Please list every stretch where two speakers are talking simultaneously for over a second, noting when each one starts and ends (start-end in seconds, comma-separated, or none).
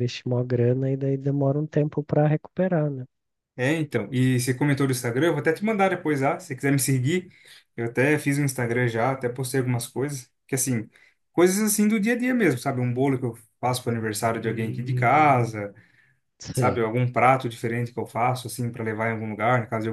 none